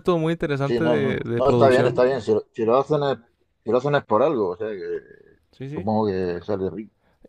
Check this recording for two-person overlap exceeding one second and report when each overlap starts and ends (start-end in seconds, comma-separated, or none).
0.6-2.0